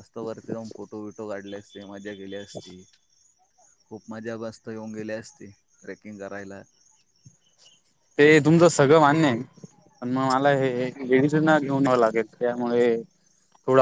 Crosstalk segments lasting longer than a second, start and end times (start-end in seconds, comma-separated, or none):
none